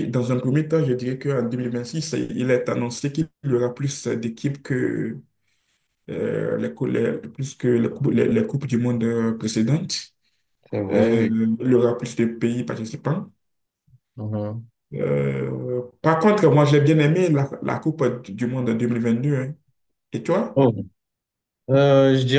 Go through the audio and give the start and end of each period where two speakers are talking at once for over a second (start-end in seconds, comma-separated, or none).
none